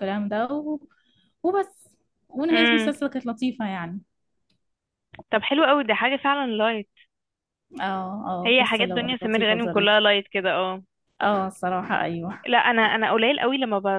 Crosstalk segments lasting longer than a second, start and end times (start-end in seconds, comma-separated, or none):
8.4-10.0